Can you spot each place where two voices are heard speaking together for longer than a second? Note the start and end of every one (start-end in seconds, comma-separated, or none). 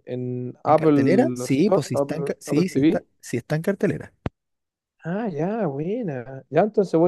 0.7-3.1